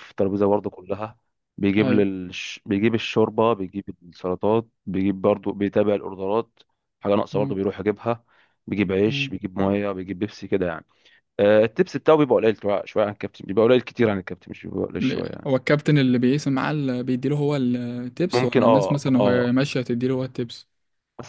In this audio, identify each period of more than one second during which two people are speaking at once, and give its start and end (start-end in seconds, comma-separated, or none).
18.3-19.5